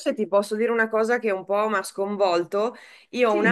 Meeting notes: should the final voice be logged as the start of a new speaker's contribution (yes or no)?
no